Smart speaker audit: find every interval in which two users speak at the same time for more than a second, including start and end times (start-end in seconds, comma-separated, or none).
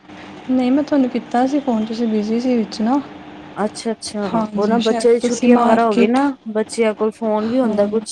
4.3-6.2